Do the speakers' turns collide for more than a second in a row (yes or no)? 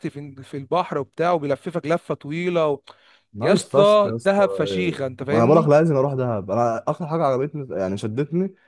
yes